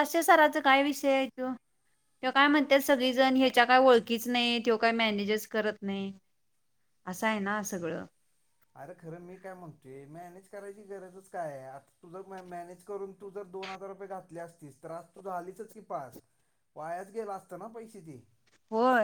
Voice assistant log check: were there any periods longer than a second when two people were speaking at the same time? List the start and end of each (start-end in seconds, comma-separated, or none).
none